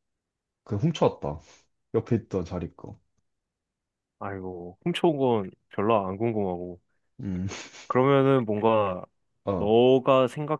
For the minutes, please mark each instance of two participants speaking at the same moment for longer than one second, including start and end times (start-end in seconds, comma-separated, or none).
none